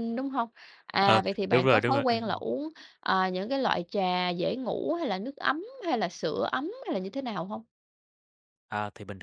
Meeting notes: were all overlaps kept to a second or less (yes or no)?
no